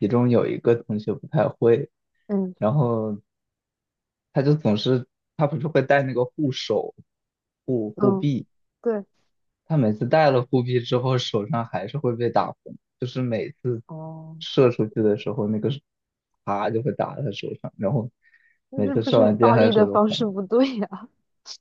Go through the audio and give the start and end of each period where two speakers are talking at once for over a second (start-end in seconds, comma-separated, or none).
18.7-20.3